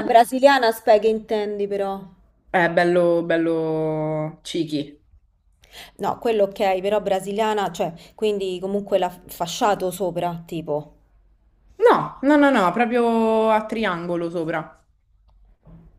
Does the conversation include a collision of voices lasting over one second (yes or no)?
no